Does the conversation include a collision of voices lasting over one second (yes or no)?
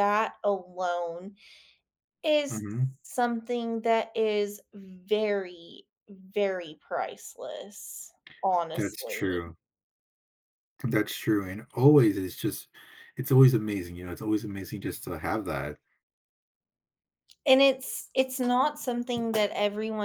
no